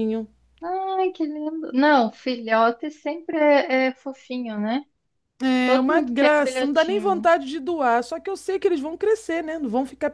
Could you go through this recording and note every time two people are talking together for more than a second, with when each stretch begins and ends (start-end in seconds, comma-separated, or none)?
5.6-7.3